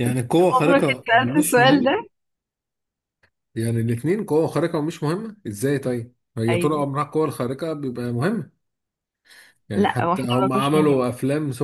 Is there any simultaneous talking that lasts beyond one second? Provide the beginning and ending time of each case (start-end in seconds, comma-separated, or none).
0.5-2.1, 9.8-11.0